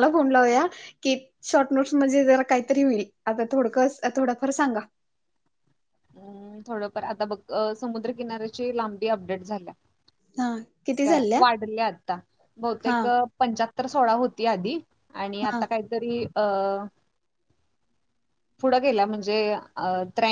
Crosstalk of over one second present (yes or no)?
no